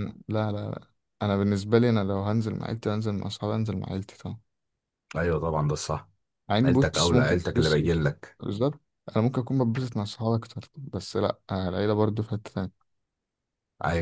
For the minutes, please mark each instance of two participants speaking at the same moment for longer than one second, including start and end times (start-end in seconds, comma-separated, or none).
6.7-8.0